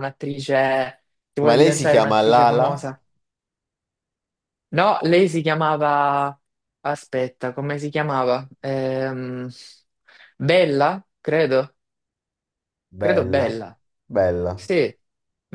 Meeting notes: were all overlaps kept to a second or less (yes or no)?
no